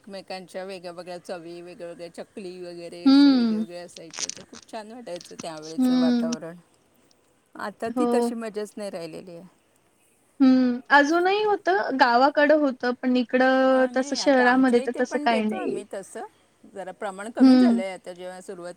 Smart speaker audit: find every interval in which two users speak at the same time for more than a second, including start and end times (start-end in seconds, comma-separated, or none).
13.7-15.8